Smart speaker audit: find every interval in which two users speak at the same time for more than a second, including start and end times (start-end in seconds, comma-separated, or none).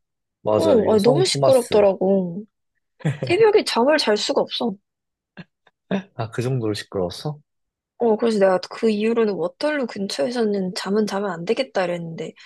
0.6-1.9